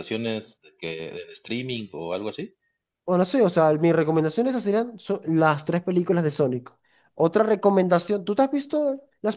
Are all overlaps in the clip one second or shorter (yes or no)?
yes